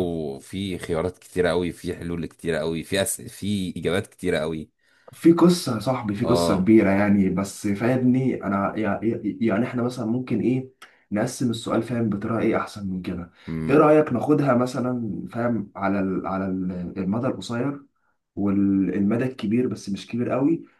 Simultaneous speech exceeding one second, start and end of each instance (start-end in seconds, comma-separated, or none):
none